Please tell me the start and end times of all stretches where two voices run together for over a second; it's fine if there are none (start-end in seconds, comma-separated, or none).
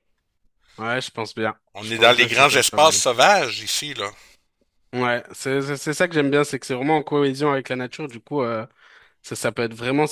1.8-3.0